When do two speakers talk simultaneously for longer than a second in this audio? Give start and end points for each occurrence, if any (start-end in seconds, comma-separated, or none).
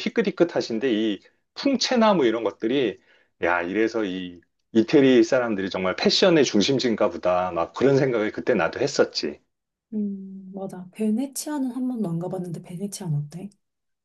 none